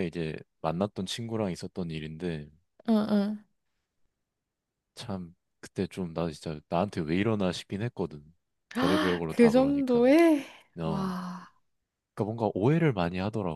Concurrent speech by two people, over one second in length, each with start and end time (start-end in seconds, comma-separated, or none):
8.7-10.0